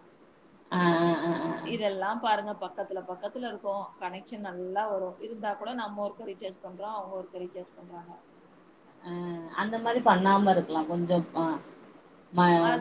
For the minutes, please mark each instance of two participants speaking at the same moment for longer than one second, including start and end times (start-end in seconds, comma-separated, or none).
none